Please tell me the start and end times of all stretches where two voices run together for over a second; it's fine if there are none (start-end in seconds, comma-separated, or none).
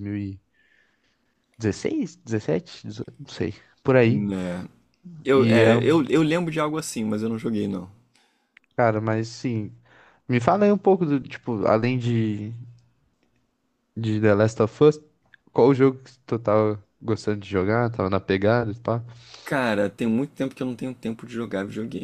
none